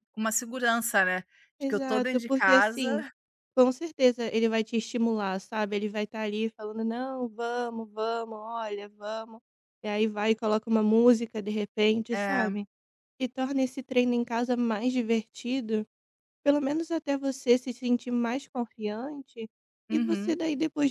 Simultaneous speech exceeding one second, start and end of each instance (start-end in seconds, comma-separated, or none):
1.6-3.0